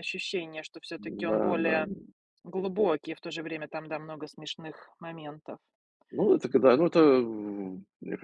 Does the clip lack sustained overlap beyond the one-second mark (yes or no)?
yes